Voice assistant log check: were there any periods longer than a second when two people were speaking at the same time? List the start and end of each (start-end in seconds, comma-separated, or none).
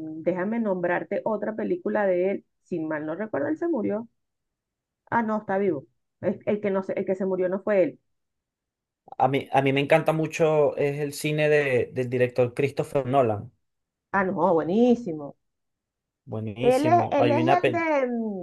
16.6-17.9